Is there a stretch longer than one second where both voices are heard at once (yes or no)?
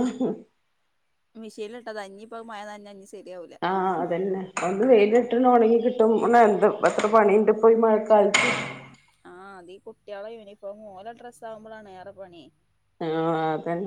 no